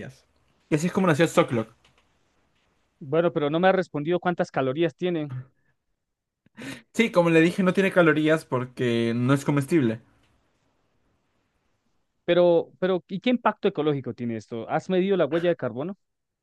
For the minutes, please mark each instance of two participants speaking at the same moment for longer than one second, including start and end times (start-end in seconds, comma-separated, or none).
none